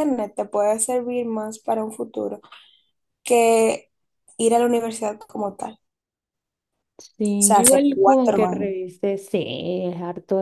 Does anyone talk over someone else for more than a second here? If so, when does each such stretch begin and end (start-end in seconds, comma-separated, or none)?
7.4-8.7